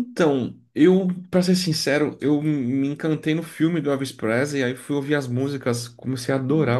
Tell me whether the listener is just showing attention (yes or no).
yes